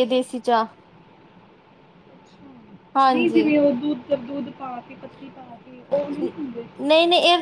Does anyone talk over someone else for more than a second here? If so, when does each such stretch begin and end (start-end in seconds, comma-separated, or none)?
none